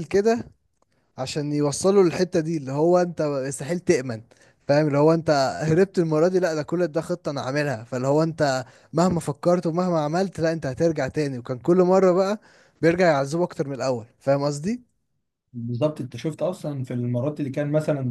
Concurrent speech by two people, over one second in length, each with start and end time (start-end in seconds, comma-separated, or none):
none